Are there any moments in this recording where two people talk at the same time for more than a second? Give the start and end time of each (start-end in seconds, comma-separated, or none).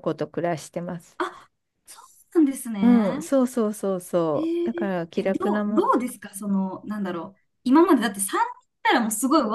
4.3-5.9